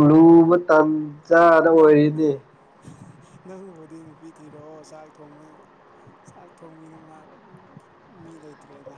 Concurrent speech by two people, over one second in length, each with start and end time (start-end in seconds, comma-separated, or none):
none